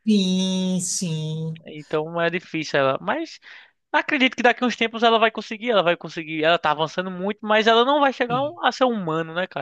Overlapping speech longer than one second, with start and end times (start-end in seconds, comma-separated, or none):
none